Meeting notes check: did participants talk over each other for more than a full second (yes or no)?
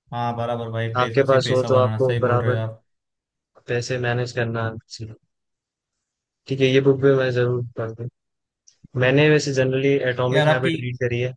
yes